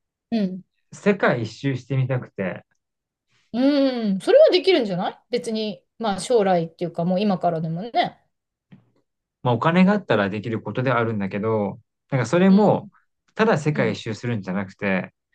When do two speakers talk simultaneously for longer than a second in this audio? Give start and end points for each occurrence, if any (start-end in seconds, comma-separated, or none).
none